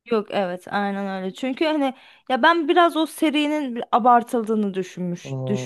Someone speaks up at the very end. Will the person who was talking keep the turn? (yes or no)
no